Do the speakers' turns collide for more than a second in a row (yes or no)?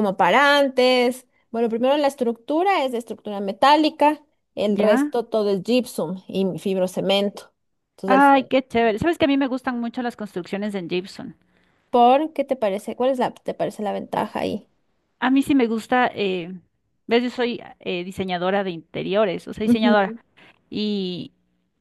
no